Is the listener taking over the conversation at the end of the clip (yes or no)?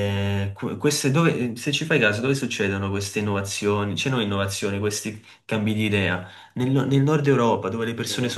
no